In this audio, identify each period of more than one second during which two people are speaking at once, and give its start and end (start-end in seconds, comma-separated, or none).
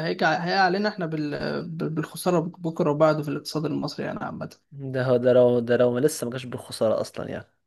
none